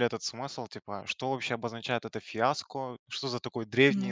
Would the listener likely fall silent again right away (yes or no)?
yes